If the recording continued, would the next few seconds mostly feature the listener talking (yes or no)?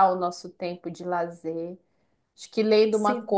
no